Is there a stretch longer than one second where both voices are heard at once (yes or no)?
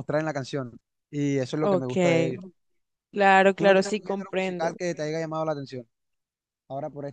yes